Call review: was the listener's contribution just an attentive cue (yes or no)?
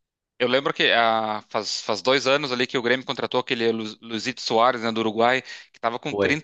yes